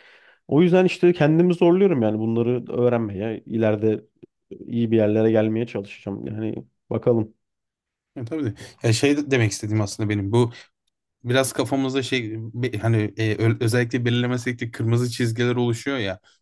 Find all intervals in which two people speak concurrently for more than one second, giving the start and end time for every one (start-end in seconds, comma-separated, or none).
none